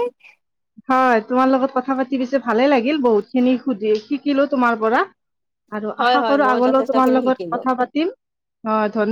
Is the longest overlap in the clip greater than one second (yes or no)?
yes